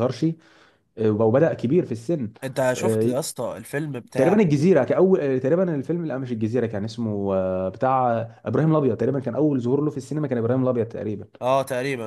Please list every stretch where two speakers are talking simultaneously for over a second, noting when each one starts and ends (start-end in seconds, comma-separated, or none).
none